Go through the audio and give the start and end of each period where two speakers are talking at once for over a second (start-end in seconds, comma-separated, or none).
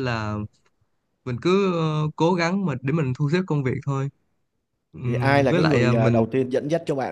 5.0-6.2